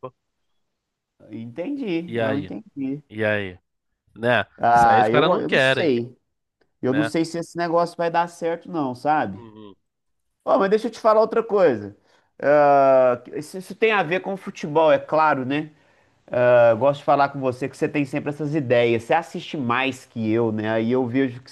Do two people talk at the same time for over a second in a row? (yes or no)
yes